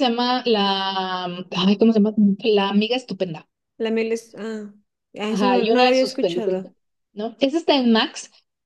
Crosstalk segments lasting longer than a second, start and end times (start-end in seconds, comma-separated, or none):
5.3-6.7